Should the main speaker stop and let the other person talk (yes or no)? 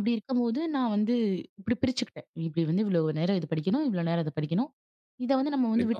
no